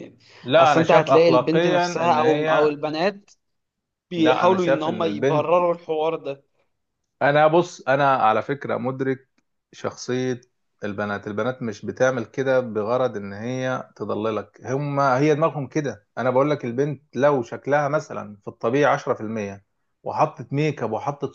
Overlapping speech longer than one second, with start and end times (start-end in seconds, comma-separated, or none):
0.6-2.7, 4.2-5.6